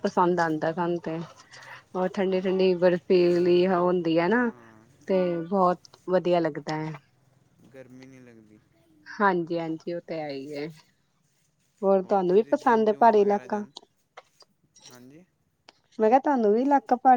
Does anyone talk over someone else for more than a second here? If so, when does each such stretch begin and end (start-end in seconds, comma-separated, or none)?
12.3-13.6